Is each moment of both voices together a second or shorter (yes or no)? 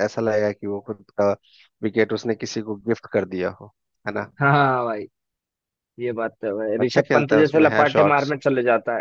no